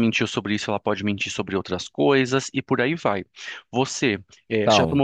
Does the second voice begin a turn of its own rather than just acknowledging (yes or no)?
no